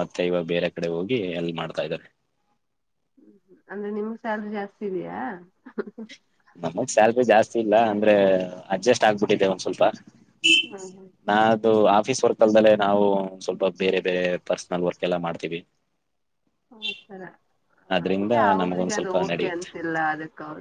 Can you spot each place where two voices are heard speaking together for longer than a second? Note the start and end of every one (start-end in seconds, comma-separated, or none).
18.0-19.7